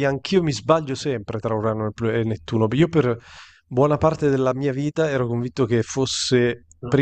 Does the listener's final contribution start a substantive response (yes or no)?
no